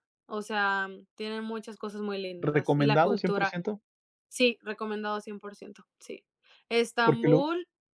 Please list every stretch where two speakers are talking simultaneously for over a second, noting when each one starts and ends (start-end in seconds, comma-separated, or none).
2.4-3.6